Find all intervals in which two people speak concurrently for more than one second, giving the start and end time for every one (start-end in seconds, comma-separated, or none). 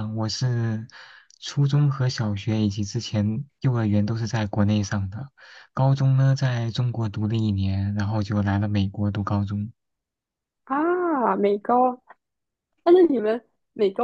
none